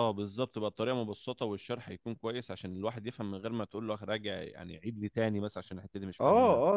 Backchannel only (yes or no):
no